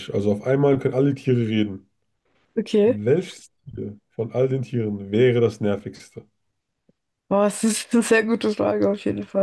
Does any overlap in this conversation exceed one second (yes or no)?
no